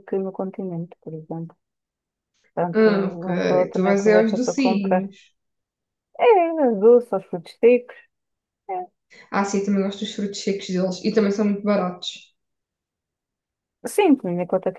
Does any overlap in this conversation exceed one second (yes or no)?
yes